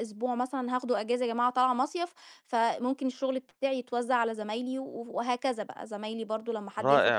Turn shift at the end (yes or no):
yes